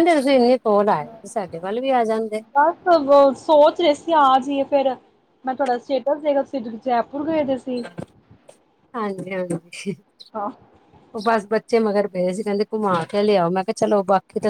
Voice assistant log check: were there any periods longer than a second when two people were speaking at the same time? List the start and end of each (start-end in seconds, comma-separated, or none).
none